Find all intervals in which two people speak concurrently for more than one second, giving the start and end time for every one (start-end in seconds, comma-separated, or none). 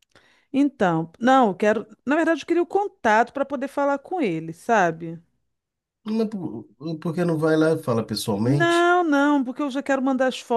none